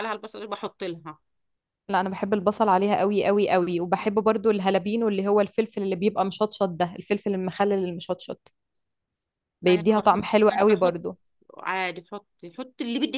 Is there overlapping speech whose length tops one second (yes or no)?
yes